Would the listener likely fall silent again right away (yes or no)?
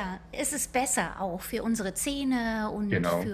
yes